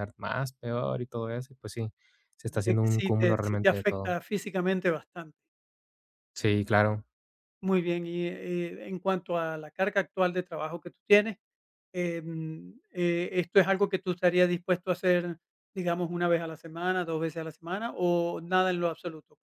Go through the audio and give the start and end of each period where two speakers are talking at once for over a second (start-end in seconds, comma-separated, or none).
2.4-4.2